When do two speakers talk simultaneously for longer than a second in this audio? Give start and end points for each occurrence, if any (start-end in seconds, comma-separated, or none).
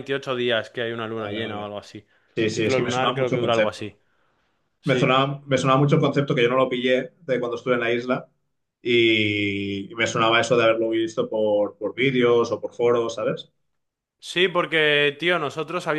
2.5-4.0